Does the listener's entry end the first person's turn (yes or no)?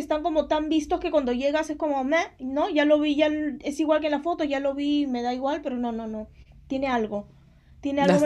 no